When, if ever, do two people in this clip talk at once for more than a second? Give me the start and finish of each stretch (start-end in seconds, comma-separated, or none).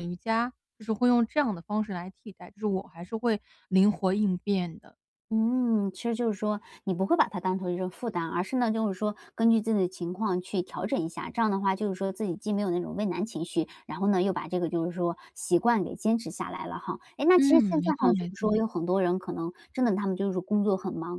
17.4-18.6